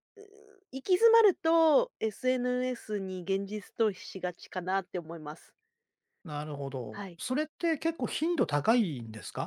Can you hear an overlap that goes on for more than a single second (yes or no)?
no